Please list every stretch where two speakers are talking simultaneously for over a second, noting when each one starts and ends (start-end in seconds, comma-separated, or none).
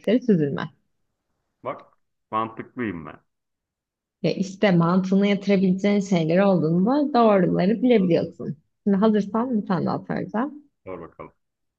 none